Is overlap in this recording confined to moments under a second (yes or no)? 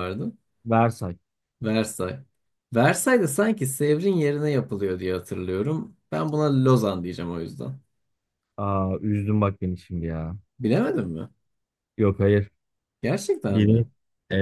yes